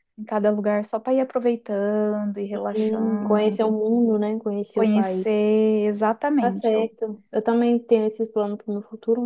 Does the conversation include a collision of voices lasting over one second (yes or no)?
yes